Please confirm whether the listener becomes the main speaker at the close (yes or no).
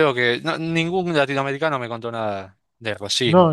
yes